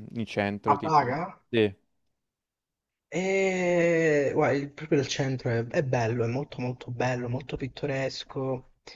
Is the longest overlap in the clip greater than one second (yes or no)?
no